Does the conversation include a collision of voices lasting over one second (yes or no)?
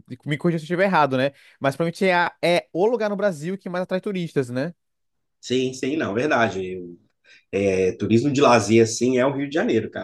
no